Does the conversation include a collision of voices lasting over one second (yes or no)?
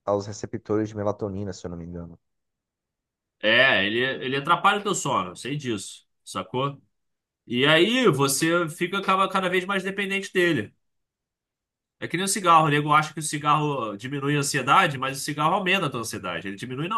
no